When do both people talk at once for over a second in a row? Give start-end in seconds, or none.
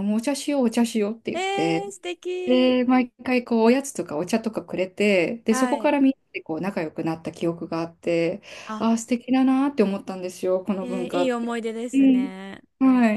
10.8-12.3